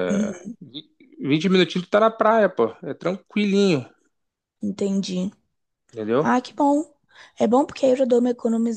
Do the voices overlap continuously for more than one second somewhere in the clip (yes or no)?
no